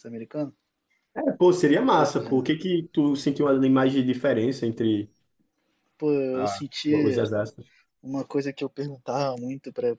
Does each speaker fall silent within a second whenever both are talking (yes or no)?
yes